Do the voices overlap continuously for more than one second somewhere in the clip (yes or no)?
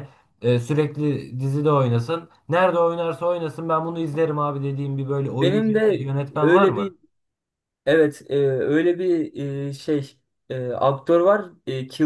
yes